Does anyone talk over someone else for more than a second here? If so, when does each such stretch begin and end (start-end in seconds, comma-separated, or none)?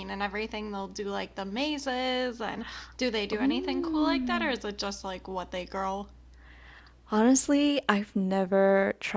3.3-4.5